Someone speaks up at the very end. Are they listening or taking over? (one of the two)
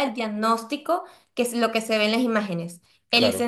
listening